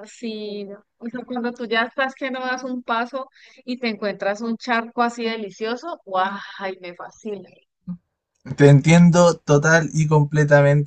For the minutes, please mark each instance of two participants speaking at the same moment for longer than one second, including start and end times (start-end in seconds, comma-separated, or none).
none